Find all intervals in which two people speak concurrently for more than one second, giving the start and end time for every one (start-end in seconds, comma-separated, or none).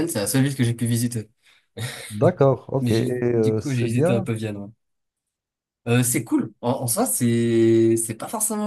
2.8-4.3